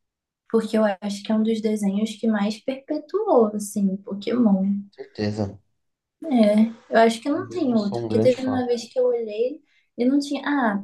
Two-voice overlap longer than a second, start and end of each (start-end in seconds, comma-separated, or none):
7.3-8.6